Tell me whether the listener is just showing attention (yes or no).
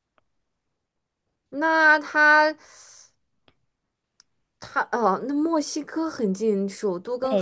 no